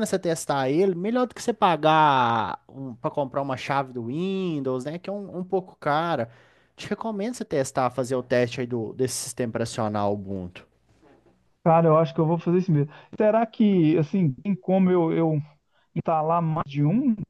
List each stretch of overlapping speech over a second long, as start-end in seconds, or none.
none